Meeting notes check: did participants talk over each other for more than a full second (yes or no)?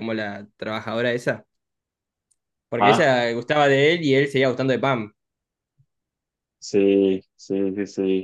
no